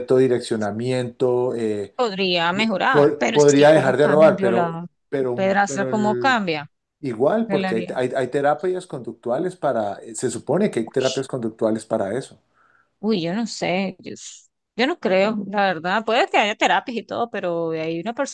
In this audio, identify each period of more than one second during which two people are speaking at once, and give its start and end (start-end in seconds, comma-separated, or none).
2.5-6.4